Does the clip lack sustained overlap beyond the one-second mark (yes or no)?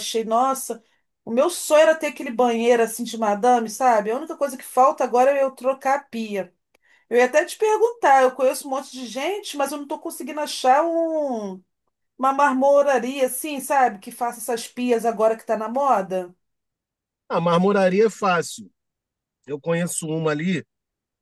yes